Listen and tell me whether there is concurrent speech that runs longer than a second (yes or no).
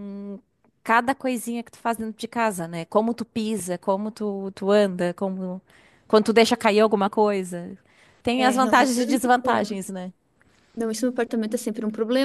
yes